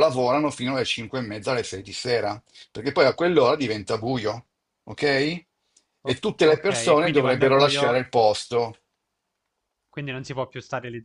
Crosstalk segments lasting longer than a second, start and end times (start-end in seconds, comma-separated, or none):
6.0-8.0